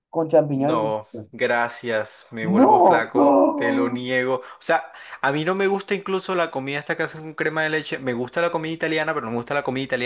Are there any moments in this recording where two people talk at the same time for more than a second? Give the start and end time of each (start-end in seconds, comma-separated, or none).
2.4-4.0